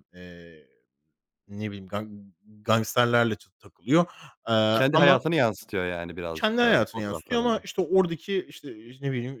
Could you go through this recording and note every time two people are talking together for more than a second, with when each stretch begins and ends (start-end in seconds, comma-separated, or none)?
6.3-7.7